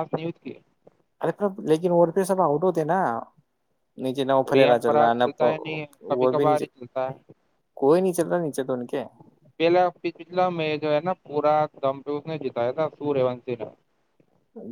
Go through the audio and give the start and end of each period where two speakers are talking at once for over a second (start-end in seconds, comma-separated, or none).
4.5-6.7